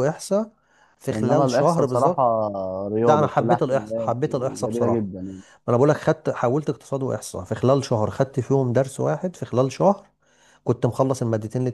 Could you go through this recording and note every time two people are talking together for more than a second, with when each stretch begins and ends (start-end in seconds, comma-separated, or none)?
1.1-2.3, 3.0-5.0